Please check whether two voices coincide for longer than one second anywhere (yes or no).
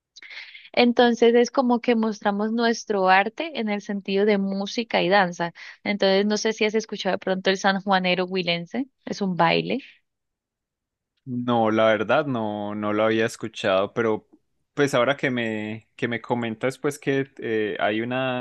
no